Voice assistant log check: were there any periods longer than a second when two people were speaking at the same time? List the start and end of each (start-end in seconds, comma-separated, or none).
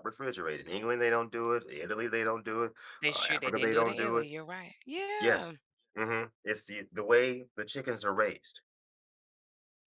3.0-4.3